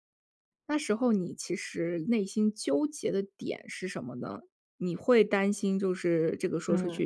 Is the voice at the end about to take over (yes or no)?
no